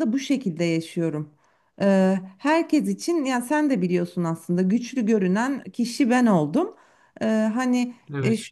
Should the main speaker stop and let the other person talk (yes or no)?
no